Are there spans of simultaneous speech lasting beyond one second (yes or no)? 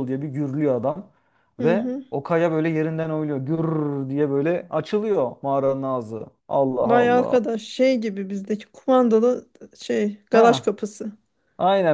no